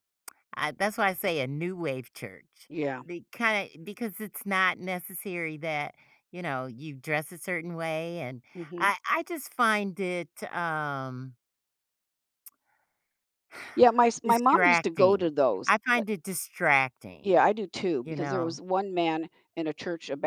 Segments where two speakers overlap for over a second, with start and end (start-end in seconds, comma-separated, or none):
14.2-15.7